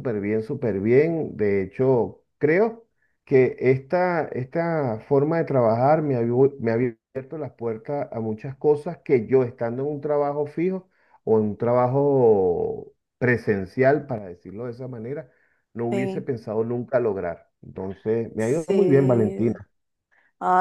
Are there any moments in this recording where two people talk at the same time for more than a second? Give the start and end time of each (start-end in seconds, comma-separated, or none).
18.4-19.6